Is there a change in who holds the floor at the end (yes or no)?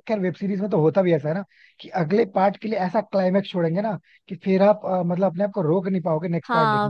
yes